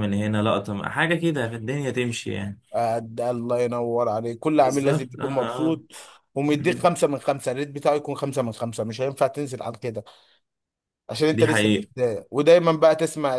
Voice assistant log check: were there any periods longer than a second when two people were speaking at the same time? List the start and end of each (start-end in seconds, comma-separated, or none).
4.5-5.8